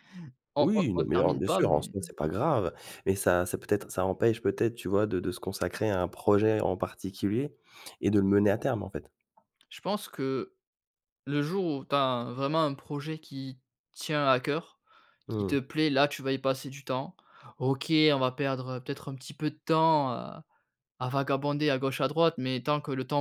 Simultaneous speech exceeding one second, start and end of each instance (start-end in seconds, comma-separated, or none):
0.6-1.9